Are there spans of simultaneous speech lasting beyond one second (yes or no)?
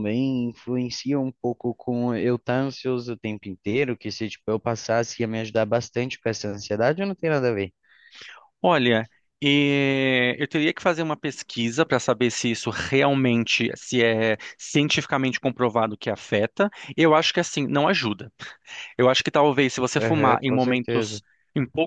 yes